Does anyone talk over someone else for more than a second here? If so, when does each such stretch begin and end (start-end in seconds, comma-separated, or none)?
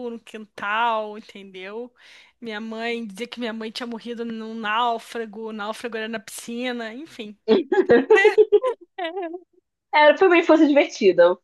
none